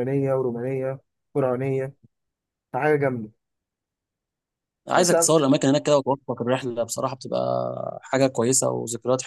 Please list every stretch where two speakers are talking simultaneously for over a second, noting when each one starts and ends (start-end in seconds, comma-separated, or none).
none